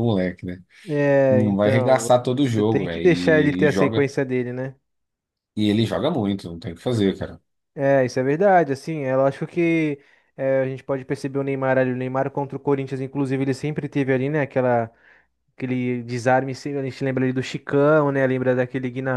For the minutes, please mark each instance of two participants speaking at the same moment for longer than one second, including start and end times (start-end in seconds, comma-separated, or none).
1.3-4.1